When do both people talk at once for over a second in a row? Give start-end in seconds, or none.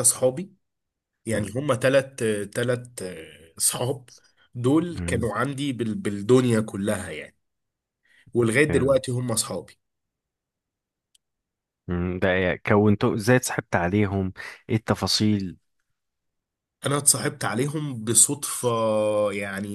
none